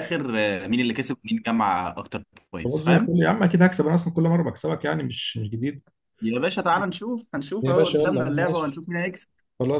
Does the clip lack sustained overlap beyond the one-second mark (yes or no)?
no